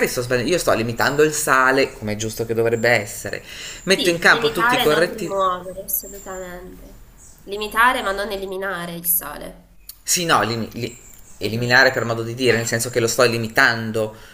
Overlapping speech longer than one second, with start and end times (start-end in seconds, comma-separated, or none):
4.0-5.5